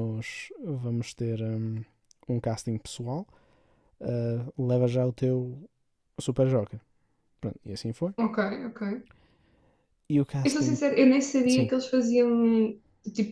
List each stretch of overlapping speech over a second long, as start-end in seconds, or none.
none